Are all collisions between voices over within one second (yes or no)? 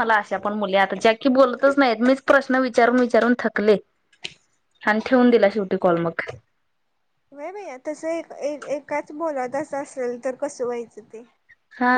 yes